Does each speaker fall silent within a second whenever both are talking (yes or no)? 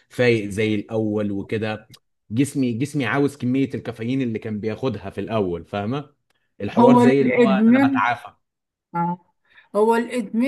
no